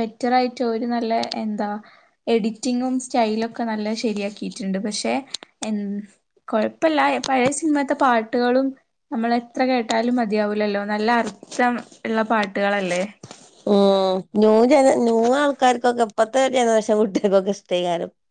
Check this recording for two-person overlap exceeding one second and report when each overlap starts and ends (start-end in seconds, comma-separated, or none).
none